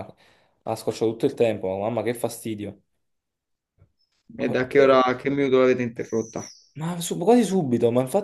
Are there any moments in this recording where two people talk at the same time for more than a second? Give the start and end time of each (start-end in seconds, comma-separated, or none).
none